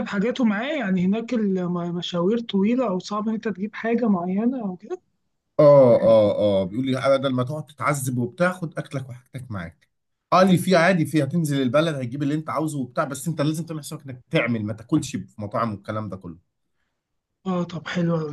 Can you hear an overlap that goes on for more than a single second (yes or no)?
no